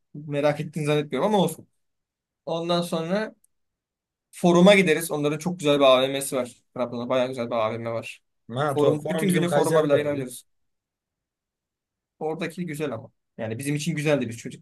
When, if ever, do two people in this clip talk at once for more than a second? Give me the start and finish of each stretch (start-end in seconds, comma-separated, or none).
8.7-10.3